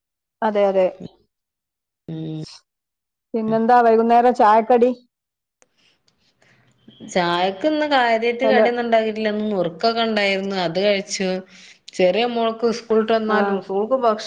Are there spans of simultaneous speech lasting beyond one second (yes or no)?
no